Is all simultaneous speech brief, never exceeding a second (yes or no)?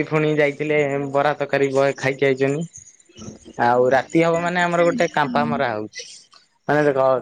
no